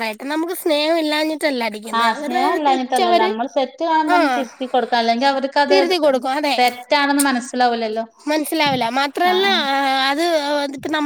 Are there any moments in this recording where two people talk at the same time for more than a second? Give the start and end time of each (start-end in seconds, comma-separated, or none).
2.0-3.3